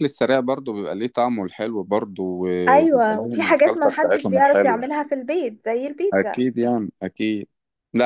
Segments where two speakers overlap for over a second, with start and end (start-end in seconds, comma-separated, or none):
2.7-4.8